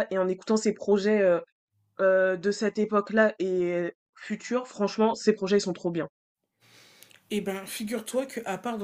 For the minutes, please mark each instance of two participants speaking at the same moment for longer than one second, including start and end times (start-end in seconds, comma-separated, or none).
none